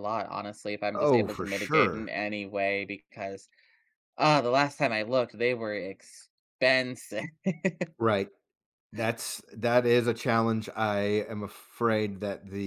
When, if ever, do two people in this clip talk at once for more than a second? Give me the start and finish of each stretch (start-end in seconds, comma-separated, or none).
0.9-2.1